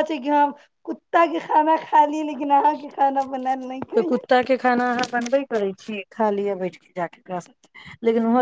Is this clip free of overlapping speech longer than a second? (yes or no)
yes